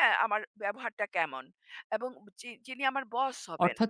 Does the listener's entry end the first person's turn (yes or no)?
yes